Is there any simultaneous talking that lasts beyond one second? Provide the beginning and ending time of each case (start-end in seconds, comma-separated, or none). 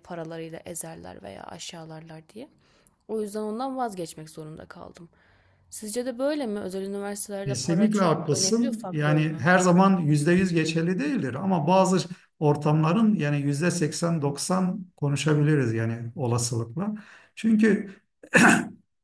7.5-9.4